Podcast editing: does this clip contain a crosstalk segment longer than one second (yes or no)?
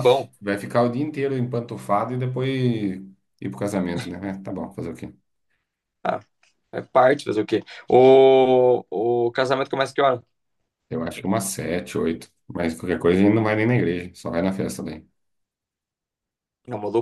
no